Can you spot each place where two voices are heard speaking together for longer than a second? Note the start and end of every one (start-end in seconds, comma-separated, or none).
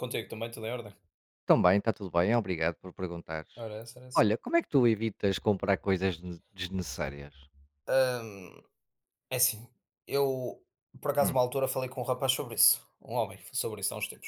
none